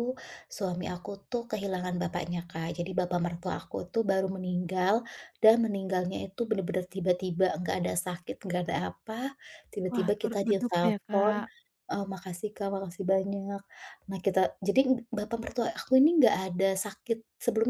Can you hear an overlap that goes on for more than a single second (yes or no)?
yes